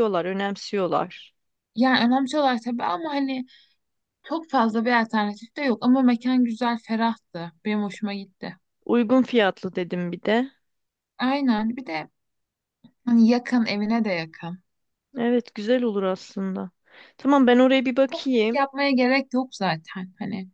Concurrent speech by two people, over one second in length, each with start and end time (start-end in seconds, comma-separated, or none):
none